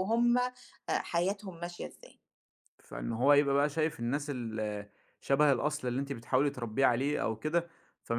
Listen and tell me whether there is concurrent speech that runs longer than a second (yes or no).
no